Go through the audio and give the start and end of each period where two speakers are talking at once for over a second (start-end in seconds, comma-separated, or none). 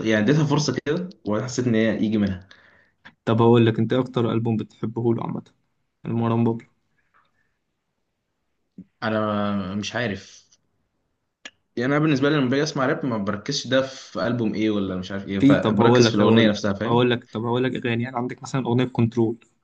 15.4-17.1